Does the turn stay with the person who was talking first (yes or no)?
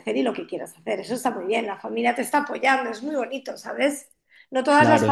yes